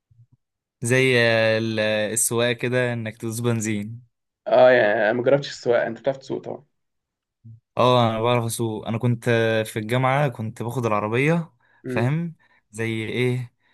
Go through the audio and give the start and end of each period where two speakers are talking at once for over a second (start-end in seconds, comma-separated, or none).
none